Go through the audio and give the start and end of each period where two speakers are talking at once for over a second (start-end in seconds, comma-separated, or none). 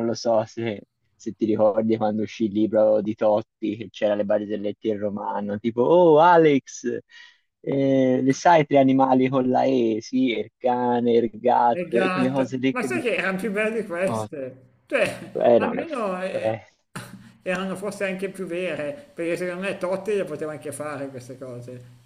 11.7-13.1